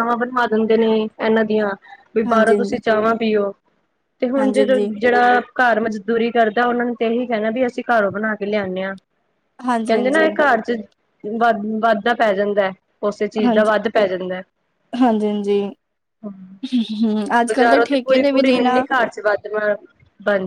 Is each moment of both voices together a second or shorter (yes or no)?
no